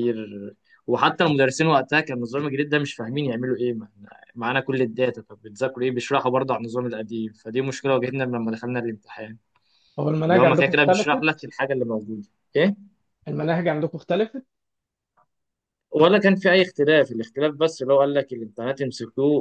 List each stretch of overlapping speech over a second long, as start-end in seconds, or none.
10.3-11.5